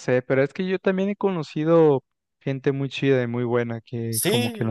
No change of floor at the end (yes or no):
no